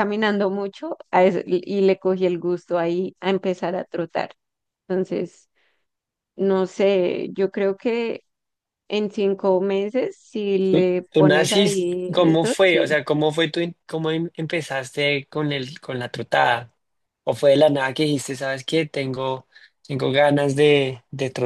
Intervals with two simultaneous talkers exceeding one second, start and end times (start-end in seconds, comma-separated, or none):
10.7-13.0